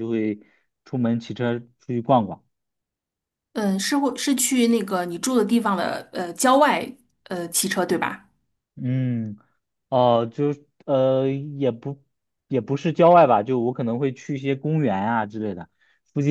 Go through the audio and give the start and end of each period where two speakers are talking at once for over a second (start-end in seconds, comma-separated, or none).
none